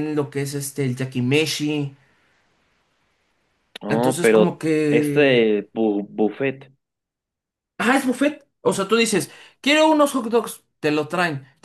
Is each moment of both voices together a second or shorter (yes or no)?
no